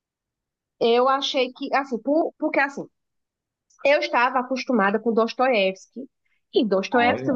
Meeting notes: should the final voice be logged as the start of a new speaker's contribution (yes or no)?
no